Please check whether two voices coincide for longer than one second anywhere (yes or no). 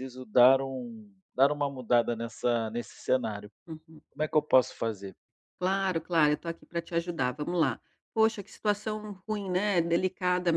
no